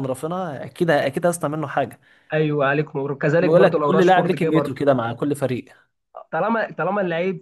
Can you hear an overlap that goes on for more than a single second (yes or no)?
yes